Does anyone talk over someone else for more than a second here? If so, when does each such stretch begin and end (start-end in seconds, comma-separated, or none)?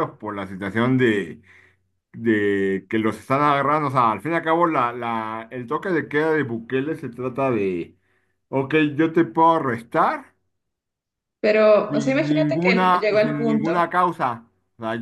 11.9-13.8